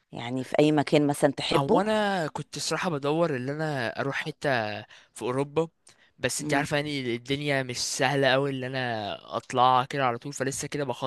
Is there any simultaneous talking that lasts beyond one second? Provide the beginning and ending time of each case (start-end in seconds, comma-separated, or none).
none